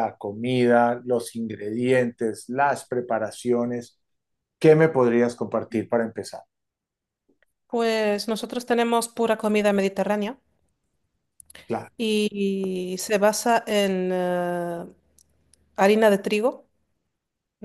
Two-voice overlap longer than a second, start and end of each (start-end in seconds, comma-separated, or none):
none